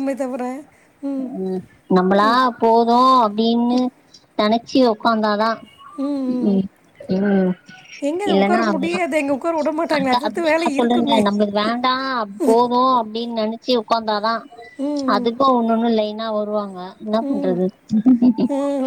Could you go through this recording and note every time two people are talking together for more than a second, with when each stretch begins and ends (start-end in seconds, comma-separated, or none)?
8.3-11.2